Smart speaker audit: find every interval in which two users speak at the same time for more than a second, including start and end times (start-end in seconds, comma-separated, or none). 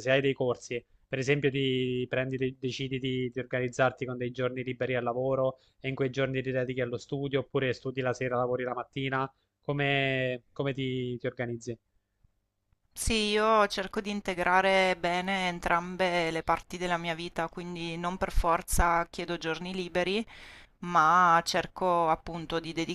none